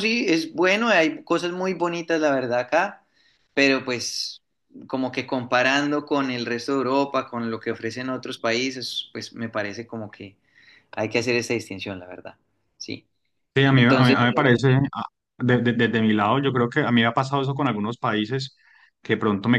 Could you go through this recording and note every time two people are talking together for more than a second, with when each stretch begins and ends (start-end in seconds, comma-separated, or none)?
none